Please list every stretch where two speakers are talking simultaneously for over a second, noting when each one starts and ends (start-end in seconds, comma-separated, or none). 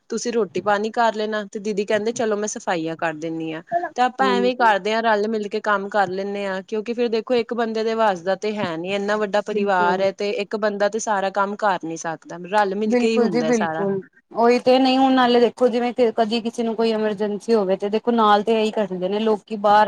none